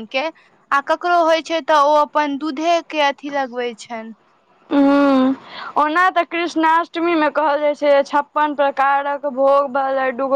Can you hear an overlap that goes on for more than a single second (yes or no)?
no